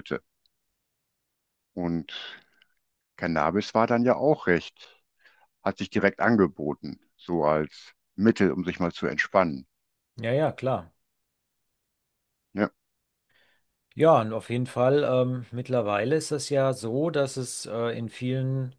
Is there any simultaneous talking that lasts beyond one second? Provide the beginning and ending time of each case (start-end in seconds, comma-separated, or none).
none